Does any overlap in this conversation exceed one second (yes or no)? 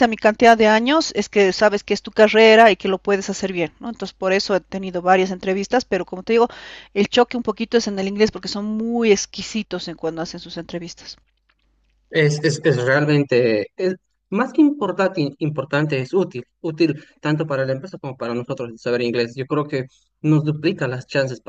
no